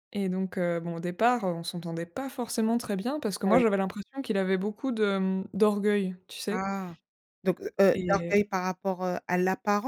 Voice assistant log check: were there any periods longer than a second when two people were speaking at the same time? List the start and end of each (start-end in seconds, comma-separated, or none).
none